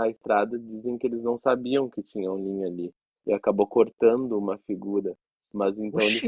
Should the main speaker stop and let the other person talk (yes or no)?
no